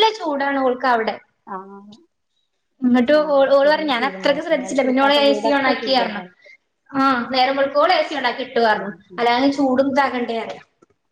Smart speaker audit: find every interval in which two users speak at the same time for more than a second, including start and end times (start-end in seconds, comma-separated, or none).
4.0-6.2